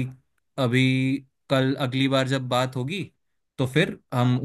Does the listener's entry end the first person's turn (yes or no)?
no